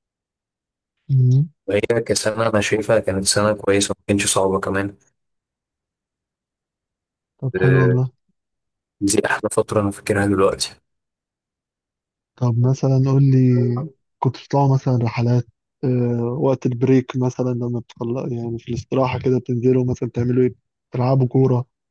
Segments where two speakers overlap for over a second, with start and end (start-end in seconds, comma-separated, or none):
none